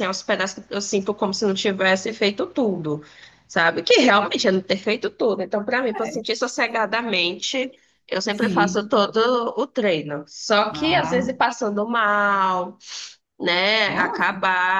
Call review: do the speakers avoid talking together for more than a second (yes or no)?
yes